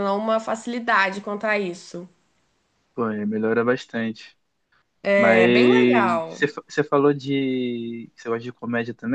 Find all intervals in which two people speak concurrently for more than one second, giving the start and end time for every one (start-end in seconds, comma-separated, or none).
5.2-6.4